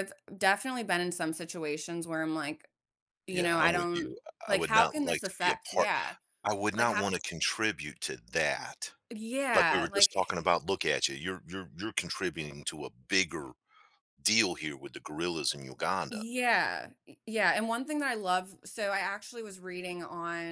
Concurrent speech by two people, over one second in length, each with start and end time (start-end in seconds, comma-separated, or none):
3.3-5.9